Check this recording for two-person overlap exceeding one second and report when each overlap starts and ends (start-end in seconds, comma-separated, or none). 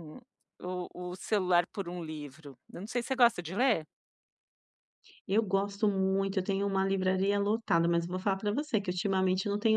none